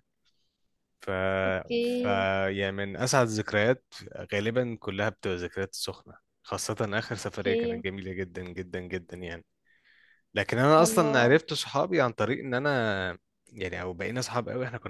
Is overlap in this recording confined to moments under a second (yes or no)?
yes